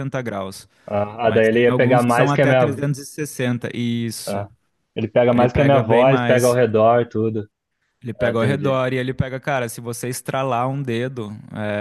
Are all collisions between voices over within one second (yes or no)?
no